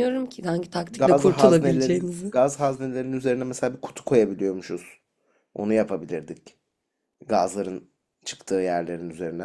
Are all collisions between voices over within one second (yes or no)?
no